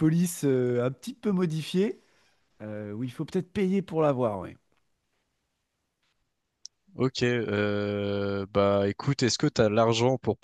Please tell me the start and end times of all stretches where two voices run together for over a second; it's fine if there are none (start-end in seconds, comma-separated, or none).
none